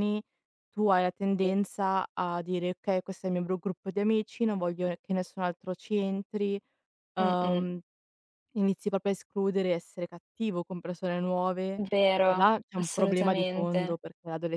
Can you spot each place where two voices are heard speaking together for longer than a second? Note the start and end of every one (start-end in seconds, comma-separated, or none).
12.2-14.0